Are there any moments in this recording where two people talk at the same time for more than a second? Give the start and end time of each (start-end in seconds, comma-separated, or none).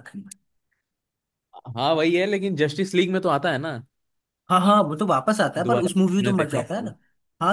5.6-6.9